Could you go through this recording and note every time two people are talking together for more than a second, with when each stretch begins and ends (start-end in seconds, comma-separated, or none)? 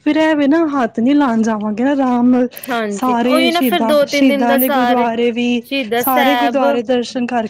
3.0-5.1